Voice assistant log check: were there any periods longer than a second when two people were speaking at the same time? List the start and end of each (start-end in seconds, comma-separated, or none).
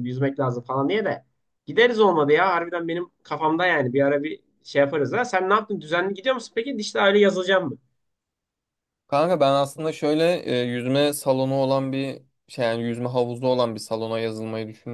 none